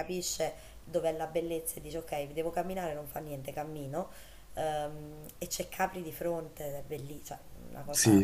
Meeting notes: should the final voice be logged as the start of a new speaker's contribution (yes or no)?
yes